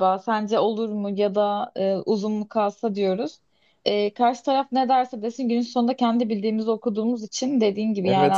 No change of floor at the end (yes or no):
no